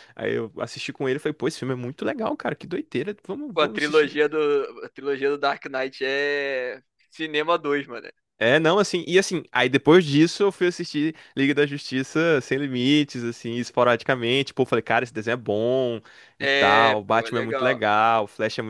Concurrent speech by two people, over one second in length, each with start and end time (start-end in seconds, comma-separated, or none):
16.4-17.8